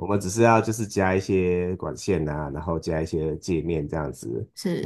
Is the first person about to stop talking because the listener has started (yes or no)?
no